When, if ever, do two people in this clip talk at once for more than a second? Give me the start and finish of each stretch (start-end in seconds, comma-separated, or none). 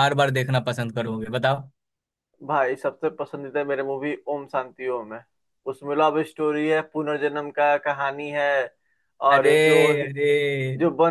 none